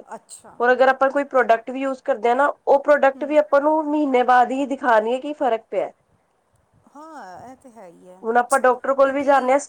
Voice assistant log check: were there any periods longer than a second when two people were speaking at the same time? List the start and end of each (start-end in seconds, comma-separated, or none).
none